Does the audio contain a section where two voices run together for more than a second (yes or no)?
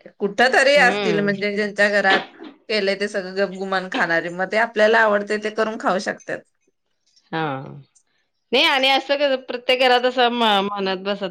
no